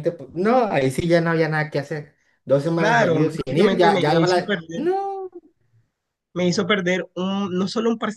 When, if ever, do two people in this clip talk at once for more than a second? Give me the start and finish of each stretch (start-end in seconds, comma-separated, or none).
2.8-4.9